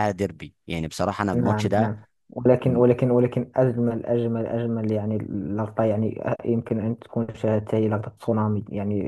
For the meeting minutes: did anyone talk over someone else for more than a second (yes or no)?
no